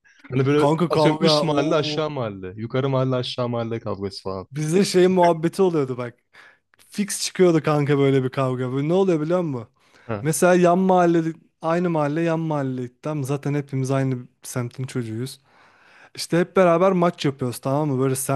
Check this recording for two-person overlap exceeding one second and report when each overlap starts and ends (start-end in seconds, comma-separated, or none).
0.6-2.1